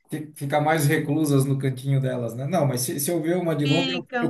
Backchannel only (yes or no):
yes